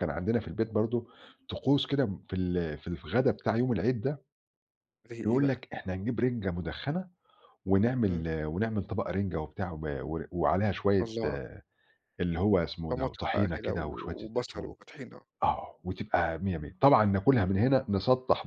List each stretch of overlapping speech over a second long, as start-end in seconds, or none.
12.9-14.7